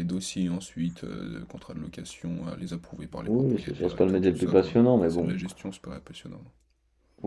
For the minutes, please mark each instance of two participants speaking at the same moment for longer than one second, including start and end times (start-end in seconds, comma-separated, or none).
3.2-5.3